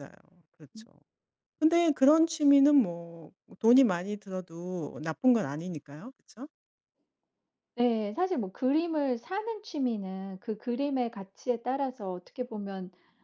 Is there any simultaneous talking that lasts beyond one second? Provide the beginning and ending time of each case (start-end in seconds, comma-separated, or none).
none